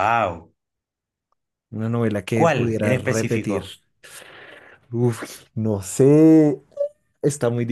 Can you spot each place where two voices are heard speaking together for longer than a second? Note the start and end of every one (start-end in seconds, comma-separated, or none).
2.3-3.6